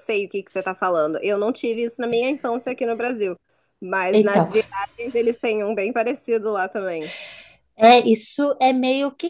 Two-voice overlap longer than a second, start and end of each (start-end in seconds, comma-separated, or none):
none